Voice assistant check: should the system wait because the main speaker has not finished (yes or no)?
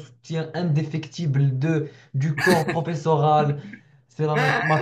yes